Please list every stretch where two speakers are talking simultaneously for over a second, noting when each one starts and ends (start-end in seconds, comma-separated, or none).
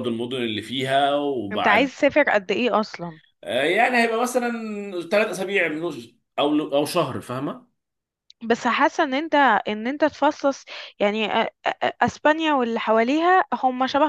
none